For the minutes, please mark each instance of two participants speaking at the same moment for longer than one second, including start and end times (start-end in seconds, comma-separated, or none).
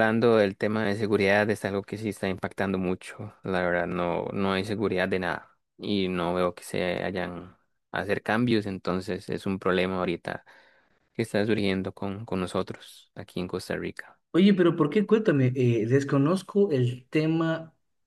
none